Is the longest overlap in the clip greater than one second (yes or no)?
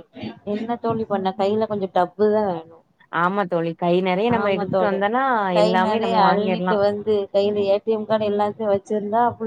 no